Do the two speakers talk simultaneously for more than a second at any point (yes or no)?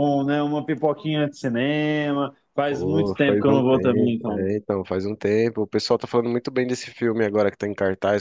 yes